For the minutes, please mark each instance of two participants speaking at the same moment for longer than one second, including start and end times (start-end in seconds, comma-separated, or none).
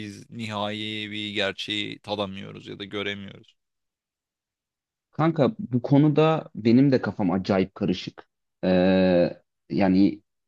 none